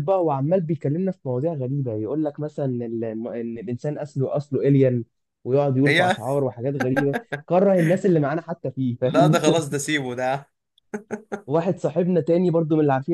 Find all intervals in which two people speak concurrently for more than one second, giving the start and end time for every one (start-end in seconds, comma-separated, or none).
none